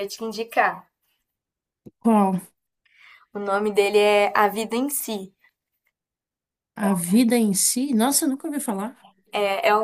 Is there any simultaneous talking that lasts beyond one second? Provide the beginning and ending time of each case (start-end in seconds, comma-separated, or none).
none